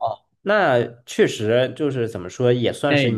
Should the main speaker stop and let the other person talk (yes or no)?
no